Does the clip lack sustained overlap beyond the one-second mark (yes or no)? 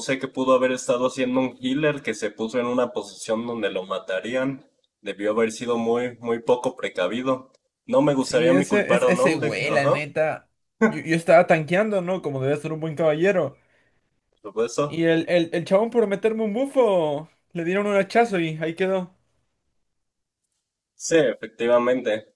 no